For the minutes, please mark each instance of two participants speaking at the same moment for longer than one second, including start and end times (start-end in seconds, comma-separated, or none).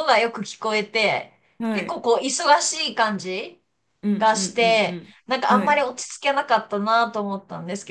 4.2-5.8